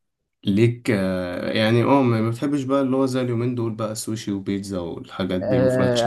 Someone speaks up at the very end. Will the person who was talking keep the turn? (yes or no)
no